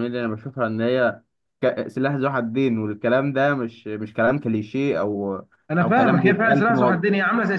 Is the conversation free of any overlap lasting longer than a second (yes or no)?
no